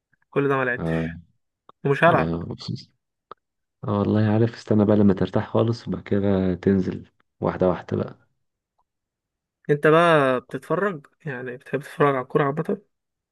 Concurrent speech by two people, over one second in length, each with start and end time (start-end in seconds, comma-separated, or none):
none